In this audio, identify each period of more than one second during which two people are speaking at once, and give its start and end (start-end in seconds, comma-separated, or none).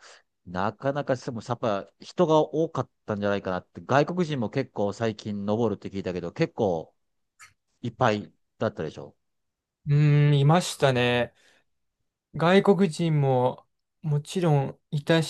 none